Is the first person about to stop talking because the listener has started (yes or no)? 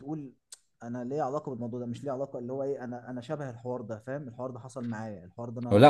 yes